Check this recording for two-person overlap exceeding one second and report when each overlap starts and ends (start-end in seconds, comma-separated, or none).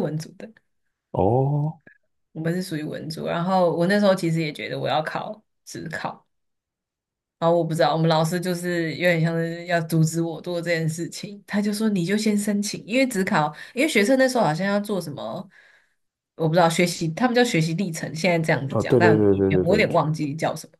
18.7-20.0